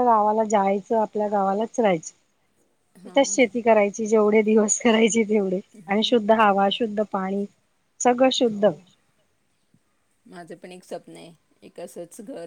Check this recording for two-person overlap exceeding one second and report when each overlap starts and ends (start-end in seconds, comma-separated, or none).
none